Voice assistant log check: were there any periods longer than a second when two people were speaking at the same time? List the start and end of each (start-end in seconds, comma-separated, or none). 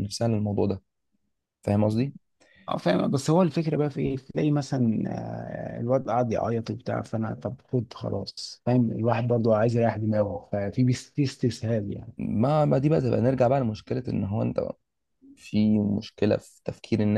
none